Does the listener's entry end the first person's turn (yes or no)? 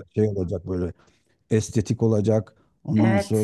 no